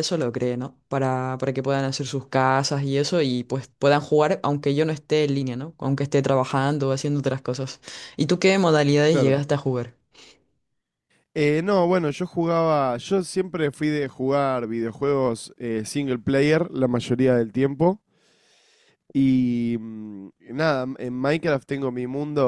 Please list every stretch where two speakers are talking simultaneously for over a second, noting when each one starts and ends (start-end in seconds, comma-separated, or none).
none